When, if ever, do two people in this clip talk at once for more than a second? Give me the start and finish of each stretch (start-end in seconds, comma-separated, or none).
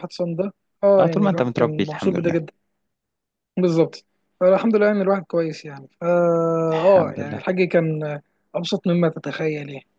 1.0-2.4